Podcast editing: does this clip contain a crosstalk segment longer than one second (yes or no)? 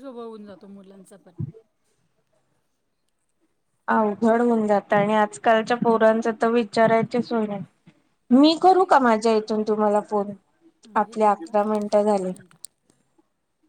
yes